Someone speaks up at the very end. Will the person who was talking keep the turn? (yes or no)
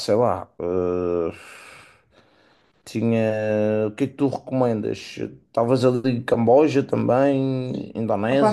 no